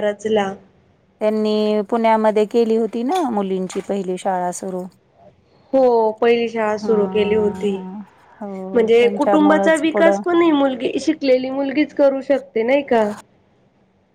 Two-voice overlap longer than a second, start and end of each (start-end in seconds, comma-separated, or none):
8.7-10.2